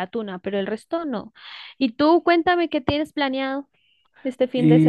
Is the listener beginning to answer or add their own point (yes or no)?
yes